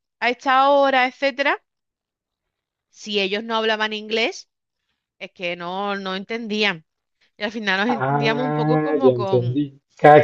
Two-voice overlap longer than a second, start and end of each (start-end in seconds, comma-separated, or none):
7.9-9.6